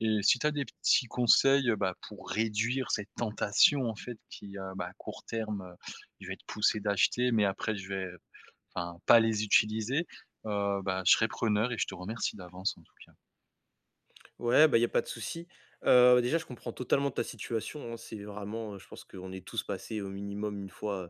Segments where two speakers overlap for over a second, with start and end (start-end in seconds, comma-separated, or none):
none